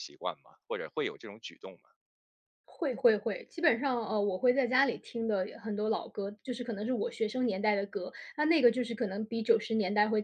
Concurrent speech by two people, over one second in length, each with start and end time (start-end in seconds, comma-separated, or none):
none